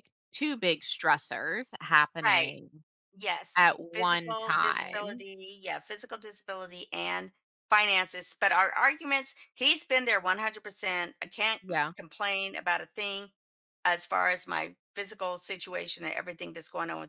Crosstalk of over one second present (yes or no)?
yes